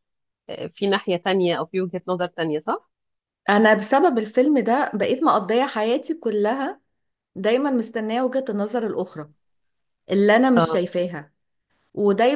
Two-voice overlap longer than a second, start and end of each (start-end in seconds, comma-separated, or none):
none